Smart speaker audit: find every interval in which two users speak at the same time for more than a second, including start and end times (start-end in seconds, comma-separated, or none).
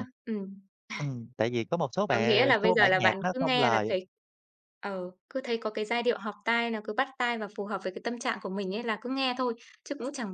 2.1-3.9